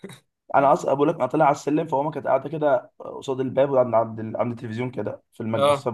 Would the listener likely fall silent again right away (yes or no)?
yes